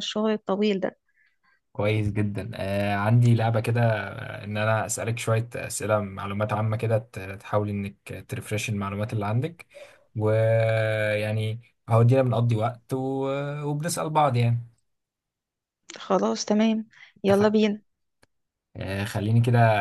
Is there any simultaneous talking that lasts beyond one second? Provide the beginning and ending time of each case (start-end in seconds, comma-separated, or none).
none